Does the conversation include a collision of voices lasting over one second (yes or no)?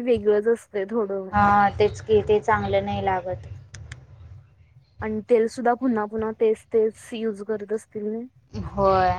no